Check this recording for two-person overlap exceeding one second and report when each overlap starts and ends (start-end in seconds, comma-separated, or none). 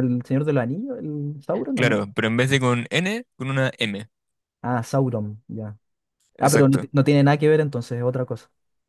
none